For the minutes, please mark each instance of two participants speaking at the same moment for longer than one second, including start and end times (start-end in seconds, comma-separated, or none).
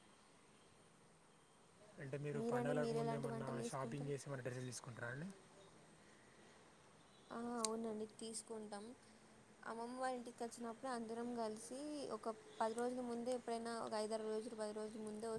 2.4-4.1